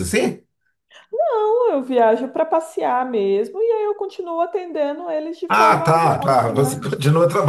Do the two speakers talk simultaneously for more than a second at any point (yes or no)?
yes